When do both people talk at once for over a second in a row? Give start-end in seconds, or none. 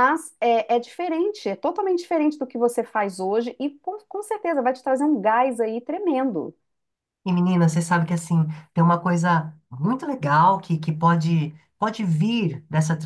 none